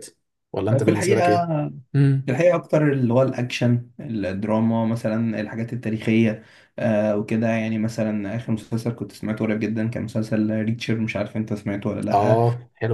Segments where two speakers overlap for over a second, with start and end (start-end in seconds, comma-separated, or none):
none